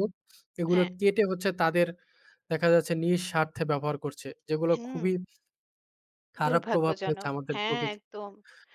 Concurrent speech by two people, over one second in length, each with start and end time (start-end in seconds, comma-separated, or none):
6.5-8.1